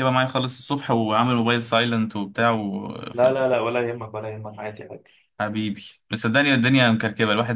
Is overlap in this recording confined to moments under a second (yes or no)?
yes